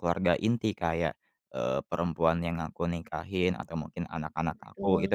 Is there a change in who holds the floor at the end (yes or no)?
no